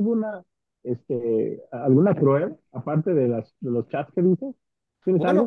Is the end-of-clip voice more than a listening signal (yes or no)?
yes